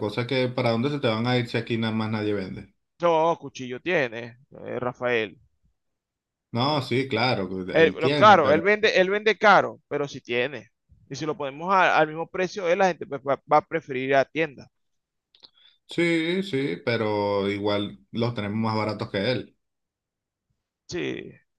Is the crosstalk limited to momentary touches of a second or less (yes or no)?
no